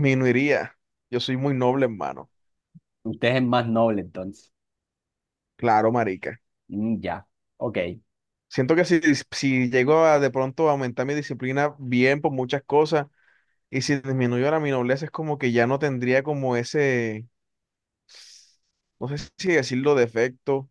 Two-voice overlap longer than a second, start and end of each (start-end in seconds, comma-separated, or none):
none